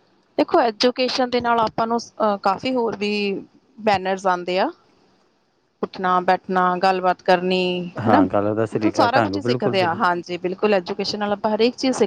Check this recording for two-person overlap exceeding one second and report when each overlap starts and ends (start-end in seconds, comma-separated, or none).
8.1-10.0